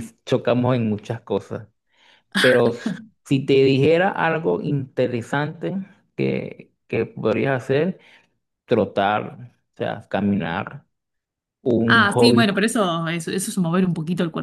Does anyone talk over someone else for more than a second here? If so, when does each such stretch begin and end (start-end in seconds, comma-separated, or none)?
none